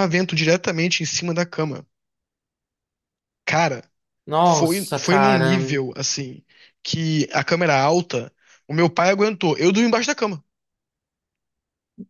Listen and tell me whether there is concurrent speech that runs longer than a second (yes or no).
yes